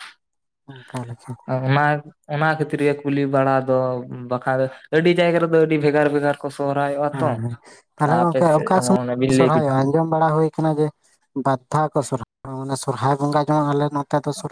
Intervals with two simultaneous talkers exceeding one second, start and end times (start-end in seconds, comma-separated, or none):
none